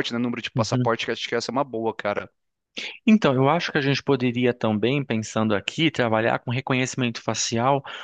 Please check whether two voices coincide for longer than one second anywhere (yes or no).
no